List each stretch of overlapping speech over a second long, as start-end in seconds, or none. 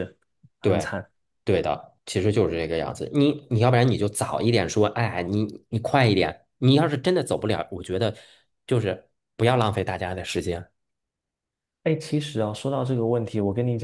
none